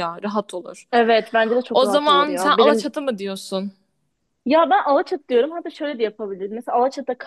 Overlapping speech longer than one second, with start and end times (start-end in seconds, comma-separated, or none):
1.7-3.0